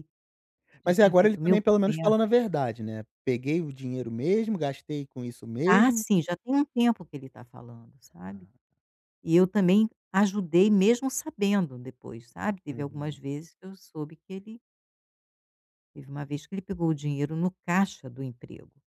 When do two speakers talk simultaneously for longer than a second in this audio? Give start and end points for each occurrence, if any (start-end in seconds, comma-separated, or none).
0.8-2.3